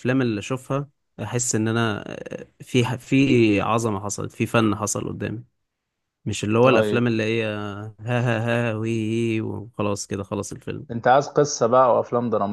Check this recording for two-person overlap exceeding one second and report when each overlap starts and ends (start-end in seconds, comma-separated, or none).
none